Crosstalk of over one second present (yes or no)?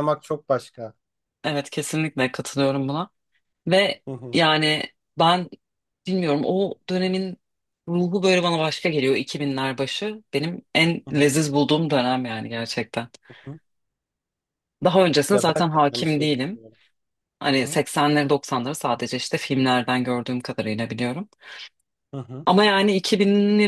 yes